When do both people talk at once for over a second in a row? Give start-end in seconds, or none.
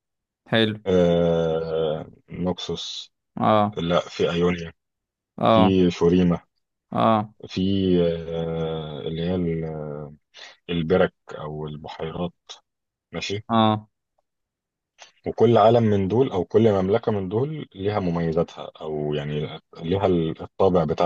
none